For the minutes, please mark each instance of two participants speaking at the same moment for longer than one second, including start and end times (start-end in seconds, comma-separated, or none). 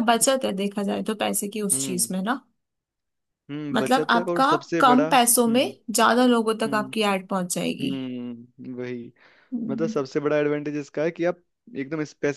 3.7-5.7